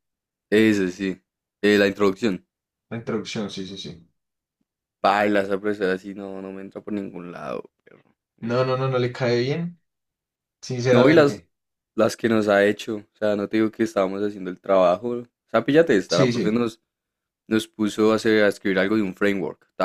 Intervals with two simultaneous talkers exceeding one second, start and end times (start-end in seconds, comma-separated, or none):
none